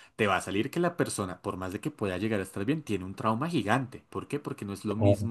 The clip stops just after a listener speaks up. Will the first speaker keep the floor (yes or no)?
yes